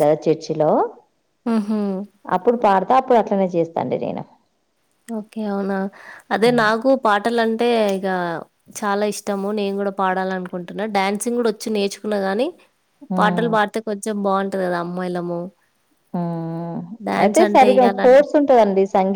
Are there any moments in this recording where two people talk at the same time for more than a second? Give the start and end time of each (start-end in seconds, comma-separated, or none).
none